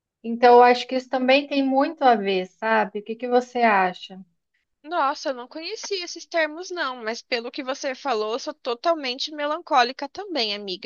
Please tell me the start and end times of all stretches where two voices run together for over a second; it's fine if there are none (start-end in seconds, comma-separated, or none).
none